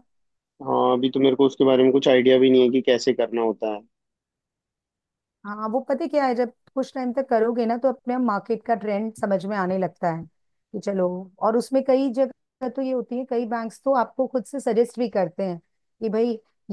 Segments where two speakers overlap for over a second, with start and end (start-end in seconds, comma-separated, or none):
none